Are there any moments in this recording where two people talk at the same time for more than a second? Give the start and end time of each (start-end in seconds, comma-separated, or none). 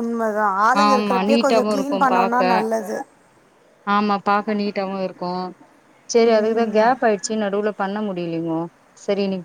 0.9-2.4